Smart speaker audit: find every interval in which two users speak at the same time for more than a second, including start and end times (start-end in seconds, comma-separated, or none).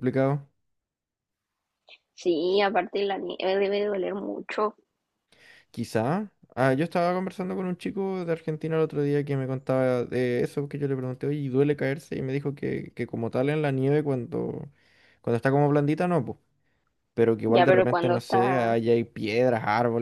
17.5-18.8